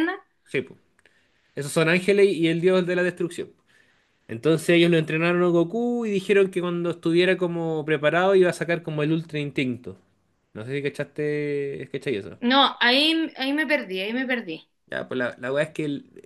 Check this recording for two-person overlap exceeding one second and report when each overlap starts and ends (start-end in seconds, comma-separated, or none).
none